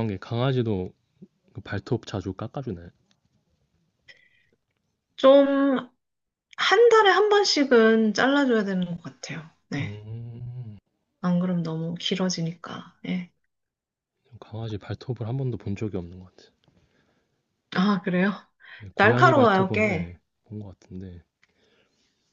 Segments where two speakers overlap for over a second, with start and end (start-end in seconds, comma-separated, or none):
19.0-20.2